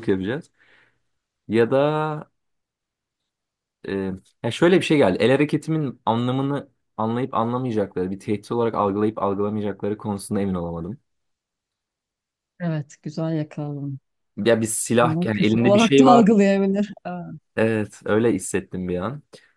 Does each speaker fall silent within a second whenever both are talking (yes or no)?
no